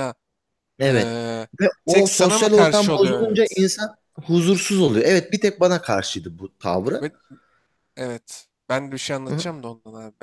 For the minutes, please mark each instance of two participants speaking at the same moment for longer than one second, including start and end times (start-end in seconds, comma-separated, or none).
1.9-3.7